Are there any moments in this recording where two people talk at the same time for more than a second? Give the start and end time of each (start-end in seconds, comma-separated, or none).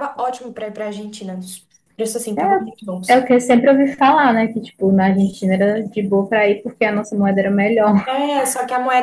none